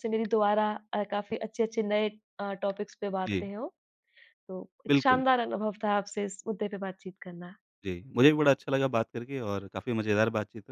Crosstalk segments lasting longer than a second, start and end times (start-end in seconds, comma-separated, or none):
none